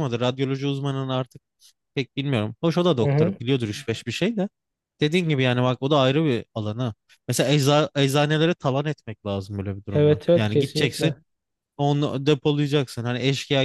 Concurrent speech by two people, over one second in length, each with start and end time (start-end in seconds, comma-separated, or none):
9.9-11.1